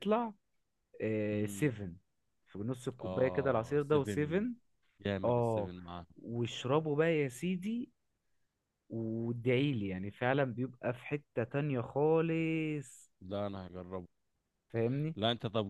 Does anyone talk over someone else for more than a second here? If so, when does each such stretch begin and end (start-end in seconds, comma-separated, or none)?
3.0-4.5